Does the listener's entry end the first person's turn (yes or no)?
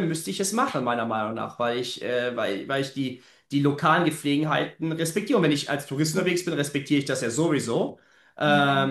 no